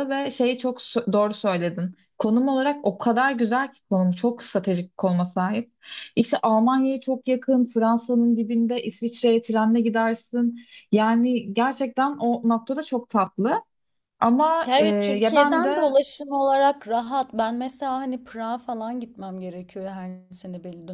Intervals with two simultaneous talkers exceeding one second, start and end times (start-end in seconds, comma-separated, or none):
14.7-15.9